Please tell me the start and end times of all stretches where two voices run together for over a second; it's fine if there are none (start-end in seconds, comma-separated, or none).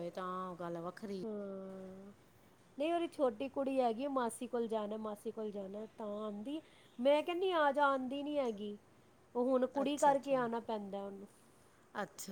none